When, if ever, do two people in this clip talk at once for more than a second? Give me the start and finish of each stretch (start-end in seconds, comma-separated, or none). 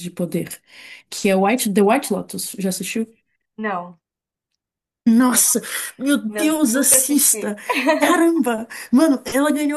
6.3-7.6